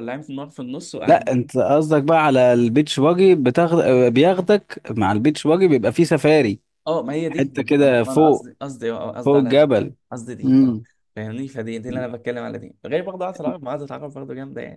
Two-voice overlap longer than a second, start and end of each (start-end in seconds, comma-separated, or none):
7.3-8.5